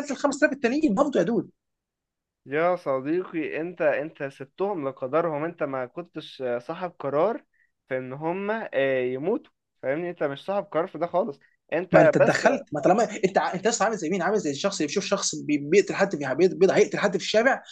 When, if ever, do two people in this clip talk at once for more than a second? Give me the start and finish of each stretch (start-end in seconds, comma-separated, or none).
none